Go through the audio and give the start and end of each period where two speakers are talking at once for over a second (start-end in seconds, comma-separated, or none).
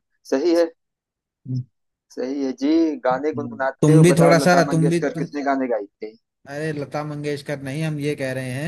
3.1-5.3